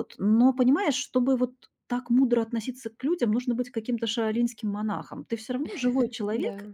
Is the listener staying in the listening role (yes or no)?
yes